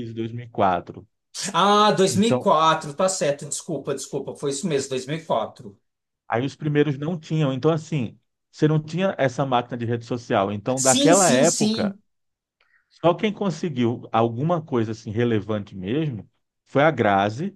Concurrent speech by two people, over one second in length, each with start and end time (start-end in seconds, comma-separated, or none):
10.8-12.0